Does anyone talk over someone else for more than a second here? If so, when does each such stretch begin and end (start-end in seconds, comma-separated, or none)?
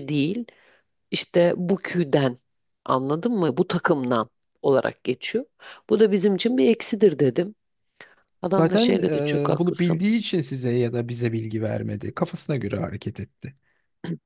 8.5-10.0